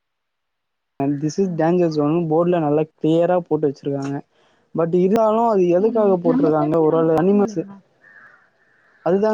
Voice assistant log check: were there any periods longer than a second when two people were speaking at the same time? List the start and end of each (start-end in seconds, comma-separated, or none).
5.8-7.6